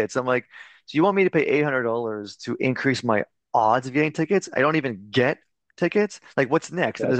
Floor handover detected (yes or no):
no